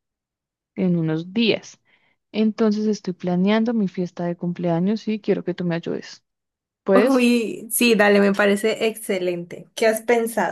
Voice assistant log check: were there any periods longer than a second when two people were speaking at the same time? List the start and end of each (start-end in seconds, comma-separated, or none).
none